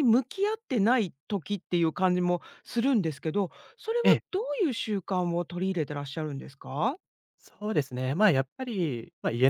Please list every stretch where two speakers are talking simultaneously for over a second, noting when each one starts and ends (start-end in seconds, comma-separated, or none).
none